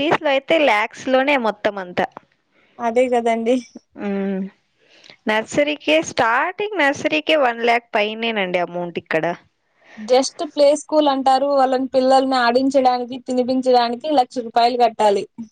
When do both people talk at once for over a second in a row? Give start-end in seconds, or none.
none